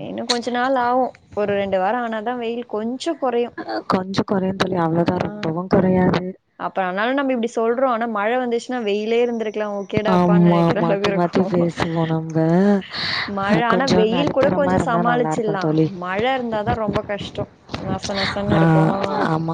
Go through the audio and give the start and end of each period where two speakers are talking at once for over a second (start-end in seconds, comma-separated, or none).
none